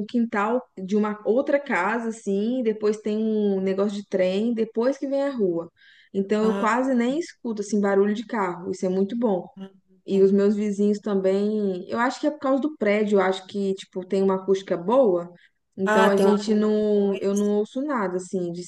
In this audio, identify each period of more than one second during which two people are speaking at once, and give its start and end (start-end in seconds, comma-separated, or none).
15.9-17.5